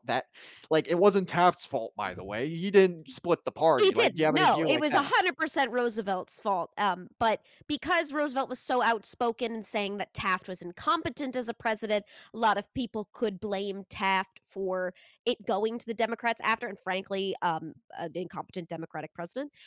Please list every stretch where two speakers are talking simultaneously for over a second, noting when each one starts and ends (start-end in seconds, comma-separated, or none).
3.7-5.1